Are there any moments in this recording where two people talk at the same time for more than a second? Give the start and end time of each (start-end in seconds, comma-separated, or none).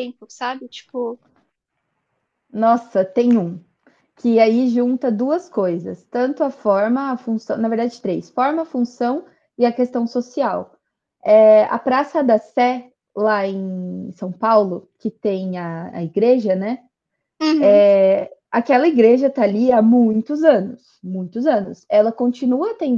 none